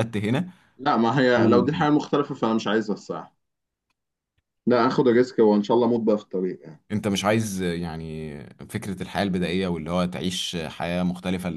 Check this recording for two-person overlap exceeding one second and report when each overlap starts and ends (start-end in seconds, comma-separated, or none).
none